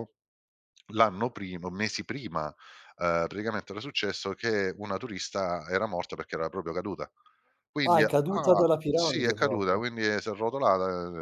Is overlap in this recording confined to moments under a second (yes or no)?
no